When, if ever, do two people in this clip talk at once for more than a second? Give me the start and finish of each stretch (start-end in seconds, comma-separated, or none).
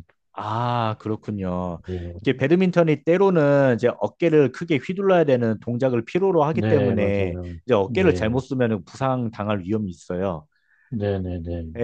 6.5-8.4